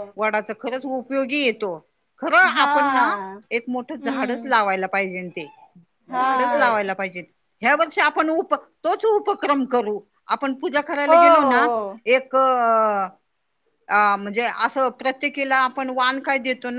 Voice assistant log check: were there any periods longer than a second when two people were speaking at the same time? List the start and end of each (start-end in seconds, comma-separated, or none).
none